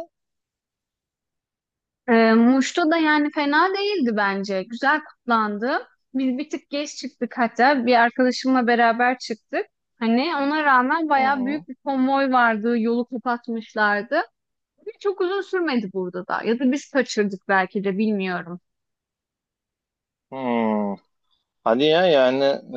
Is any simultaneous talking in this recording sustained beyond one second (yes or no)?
no